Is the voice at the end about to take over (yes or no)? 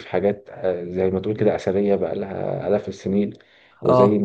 no